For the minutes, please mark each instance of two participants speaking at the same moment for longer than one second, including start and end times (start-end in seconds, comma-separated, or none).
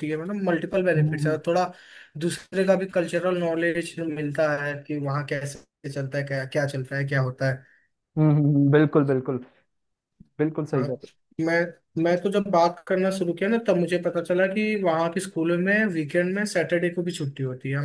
none